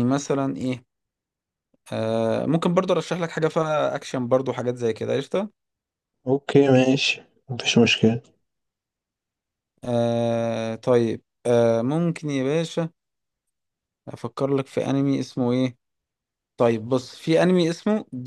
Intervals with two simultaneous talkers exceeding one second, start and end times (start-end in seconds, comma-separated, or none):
none